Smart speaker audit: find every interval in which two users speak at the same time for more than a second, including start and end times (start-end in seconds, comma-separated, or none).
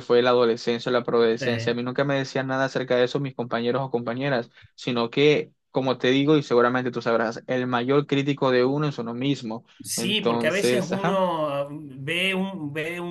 9.8-11.2